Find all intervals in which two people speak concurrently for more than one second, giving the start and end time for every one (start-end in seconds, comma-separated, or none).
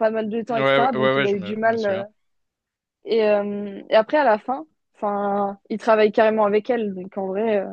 0.5-2.0